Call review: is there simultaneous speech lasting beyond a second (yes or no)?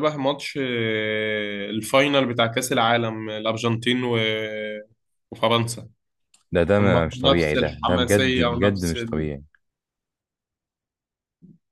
yes